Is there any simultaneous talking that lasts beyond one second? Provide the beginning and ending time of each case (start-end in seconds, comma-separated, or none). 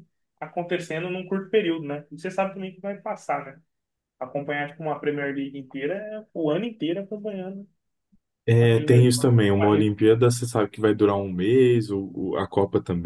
8.6-9.9